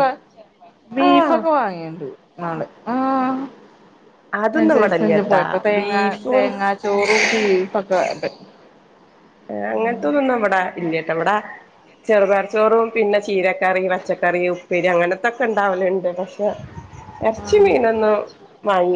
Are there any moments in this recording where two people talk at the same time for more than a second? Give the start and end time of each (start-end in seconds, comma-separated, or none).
4.6-6.5